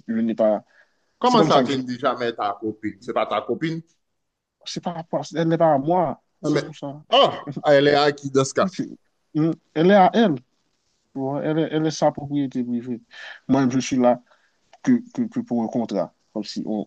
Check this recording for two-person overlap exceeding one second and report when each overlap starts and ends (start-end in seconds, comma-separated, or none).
none